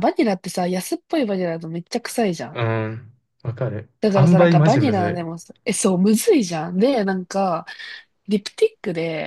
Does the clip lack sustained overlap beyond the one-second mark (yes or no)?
no